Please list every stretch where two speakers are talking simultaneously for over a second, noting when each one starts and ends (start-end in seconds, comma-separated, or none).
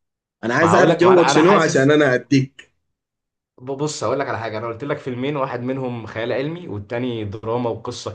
0.6-1.9